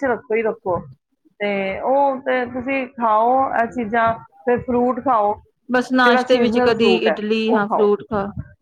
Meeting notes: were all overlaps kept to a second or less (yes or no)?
no